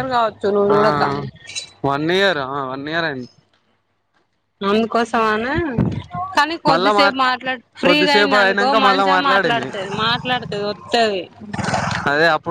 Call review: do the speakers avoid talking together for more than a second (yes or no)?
no